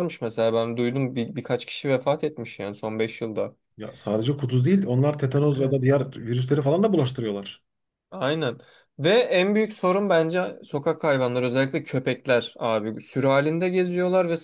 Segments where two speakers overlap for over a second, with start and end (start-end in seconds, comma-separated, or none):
none